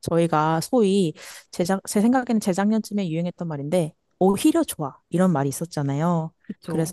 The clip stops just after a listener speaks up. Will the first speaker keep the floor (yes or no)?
yes